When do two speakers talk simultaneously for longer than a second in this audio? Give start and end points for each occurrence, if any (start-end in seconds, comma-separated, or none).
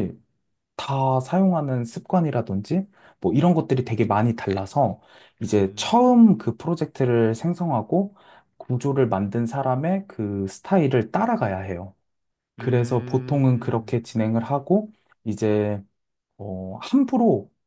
12.6-13.9